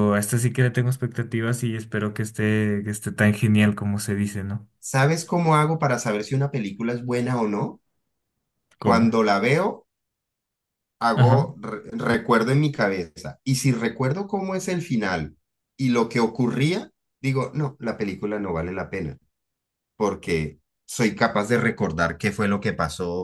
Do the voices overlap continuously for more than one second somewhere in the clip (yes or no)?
no